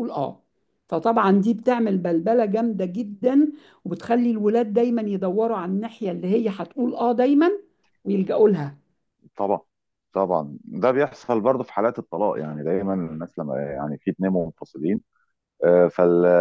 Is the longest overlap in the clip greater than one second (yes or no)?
no